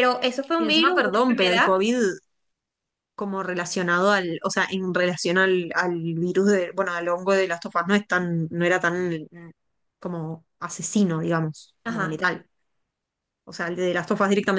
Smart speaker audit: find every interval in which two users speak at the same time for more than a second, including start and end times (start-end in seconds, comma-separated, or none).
0.6-1.8